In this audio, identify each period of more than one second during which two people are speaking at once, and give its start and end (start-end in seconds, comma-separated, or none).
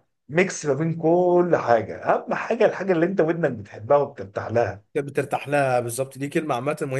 none